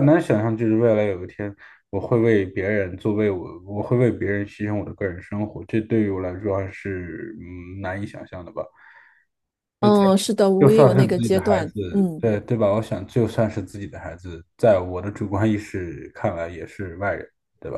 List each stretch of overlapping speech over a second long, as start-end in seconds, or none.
10.6-12.2